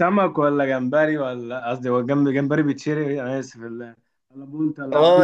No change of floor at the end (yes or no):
no